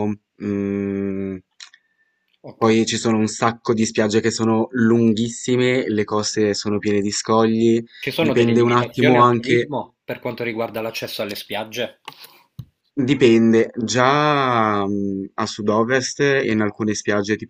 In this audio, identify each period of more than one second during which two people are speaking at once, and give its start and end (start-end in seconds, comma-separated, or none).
8.0-9.7